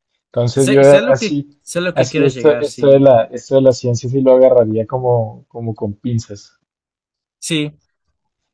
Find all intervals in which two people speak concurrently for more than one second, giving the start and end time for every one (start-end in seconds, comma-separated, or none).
0.5-3.0